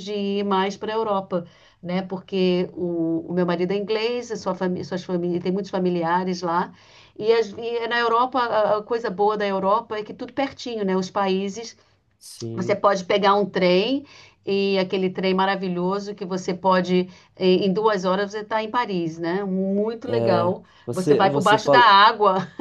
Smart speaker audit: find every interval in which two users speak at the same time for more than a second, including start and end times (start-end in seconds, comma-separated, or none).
20.1-22.0